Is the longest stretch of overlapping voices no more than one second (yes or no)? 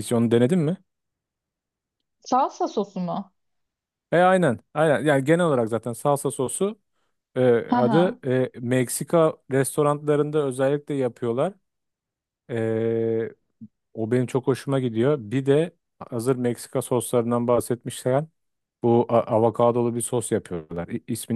yes